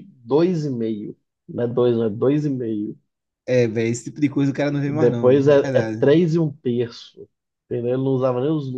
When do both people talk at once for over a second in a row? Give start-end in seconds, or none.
4.8-6.1